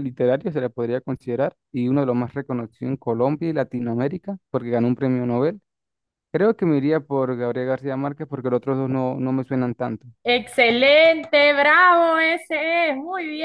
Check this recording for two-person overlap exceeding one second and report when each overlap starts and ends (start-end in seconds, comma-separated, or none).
none